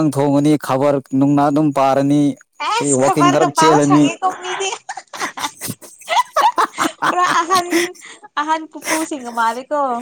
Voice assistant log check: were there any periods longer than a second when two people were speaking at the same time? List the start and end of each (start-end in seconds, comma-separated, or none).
2.8-4.0